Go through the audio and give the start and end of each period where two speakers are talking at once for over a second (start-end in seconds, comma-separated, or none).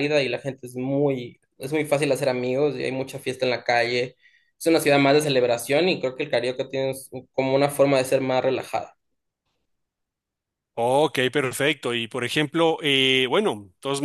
none